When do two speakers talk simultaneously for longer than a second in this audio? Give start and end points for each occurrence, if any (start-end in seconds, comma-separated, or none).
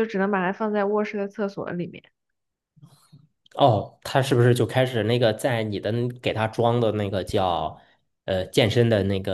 none